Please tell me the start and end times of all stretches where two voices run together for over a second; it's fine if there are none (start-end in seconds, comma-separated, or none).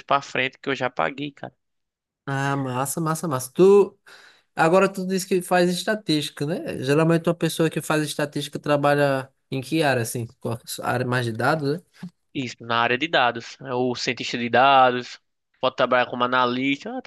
none